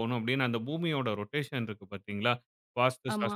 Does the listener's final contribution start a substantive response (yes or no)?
no